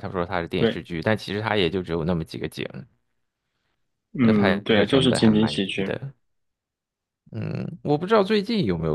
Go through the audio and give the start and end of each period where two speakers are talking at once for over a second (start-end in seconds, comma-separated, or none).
4.2-6.0